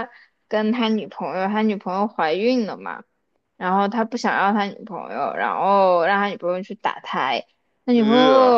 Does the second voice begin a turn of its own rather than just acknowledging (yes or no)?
no